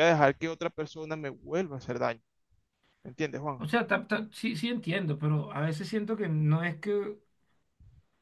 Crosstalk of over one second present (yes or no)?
no